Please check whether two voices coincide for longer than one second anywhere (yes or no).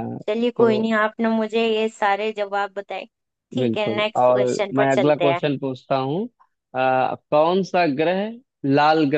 yes